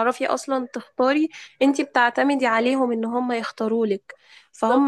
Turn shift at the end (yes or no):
no